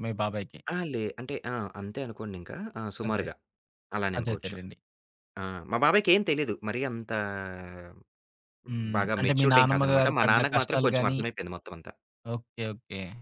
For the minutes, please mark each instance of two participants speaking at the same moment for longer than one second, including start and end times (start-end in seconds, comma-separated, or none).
9.0-11.2